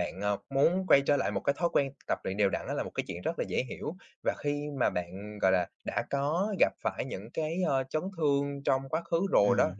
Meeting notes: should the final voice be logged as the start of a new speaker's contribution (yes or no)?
no